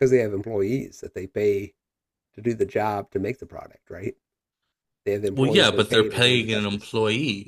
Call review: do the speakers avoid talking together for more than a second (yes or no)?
no